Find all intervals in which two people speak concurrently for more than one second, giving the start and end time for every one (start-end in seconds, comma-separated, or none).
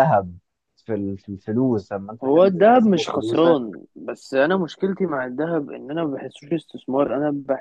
2.2-3.6